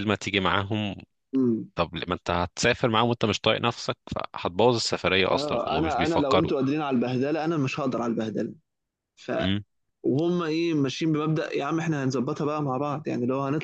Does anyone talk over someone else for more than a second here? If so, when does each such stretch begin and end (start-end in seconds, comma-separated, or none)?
5.3-6.5